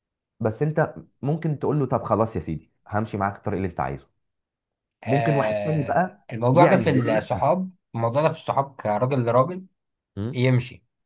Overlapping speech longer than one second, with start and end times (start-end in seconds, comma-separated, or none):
5.0-7.5